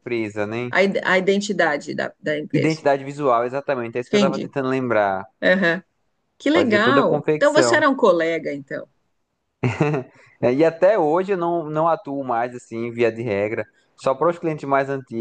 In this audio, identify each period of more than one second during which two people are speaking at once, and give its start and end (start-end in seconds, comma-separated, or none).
6.5-7.8